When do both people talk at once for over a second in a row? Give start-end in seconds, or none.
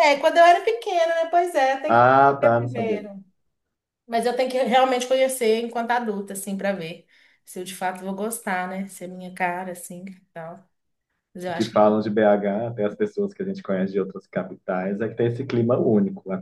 1.9-3.1